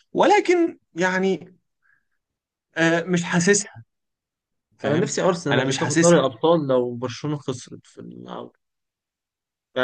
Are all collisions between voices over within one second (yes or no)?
no